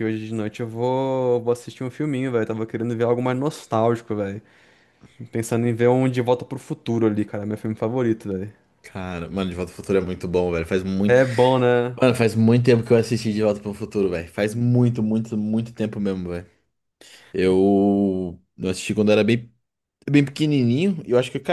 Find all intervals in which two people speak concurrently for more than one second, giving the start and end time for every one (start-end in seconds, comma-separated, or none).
none